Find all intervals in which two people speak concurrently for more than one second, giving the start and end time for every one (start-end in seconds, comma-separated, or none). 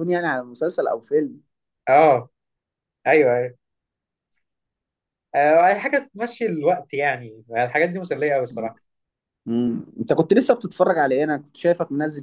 none